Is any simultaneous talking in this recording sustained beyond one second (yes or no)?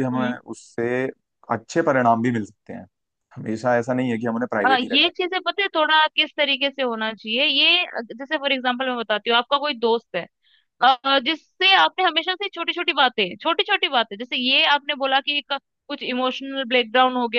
no